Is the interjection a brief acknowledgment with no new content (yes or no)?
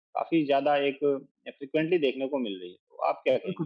no